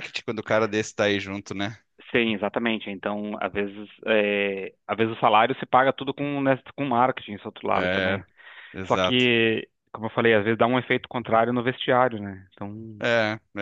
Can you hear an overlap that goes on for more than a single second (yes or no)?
no